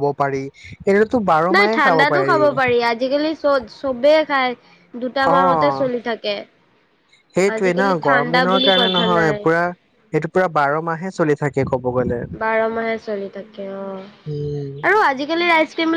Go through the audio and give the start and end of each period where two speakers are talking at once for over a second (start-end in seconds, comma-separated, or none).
7.5-9.4